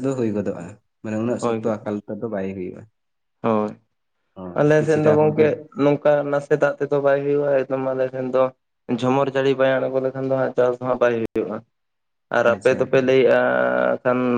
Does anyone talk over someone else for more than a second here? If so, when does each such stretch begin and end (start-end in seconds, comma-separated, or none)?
none